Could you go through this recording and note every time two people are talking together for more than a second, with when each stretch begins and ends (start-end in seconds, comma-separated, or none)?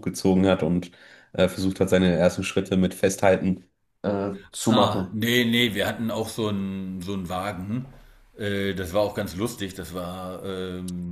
none